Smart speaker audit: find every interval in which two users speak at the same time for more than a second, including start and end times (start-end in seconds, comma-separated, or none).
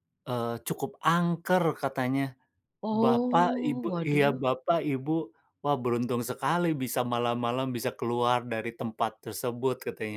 3.0-4.4